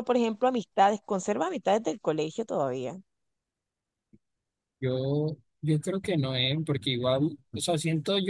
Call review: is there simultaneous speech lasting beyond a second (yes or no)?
no